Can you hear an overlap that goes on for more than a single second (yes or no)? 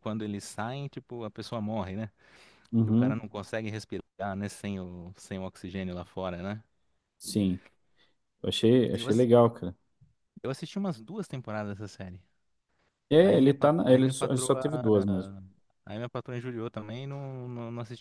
yes